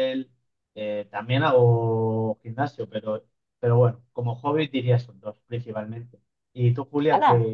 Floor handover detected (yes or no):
yes